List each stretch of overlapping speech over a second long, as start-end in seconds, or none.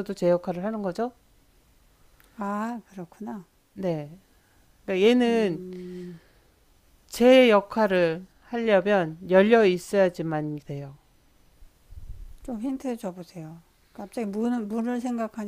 none